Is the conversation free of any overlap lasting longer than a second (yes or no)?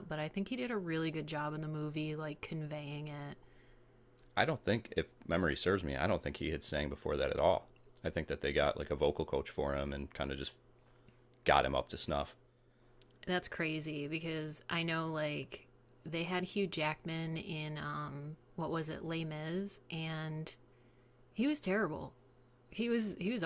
yes